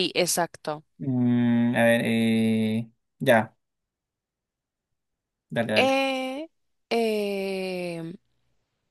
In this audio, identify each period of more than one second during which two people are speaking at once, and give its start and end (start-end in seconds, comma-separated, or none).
none